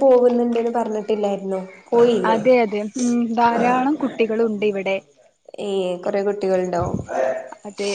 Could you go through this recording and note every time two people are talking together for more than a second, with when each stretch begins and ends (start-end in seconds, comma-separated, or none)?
none